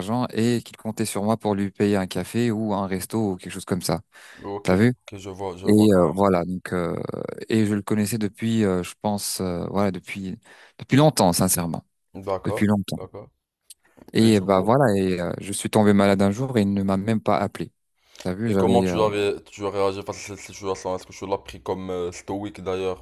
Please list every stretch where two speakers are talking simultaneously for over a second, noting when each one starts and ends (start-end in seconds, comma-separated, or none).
none